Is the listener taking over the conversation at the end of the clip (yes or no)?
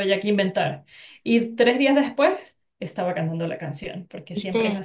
yes